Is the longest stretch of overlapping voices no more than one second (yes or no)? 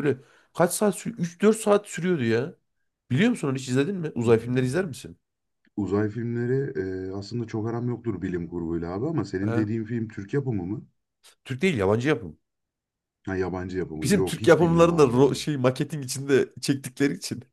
no